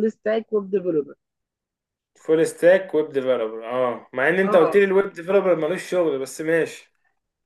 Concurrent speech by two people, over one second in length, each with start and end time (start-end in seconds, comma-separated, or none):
none